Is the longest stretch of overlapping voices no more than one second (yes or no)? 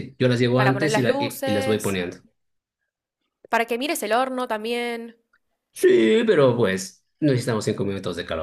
no